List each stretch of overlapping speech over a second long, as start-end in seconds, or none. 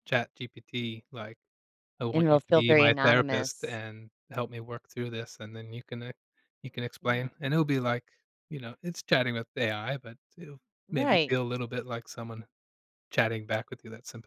2.1-3.8